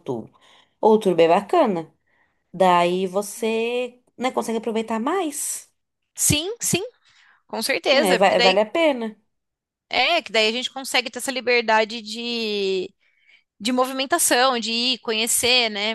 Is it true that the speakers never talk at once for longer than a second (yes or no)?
yes